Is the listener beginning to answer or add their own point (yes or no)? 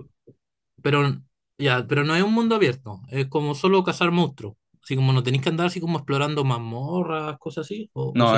yes